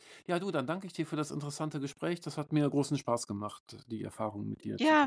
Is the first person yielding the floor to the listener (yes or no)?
yes